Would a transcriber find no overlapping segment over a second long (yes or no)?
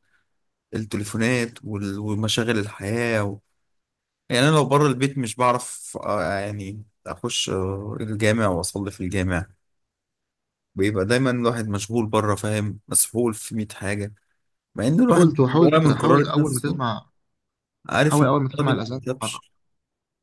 no